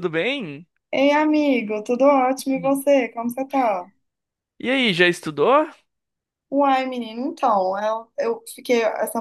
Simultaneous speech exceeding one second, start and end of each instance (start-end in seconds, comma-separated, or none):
none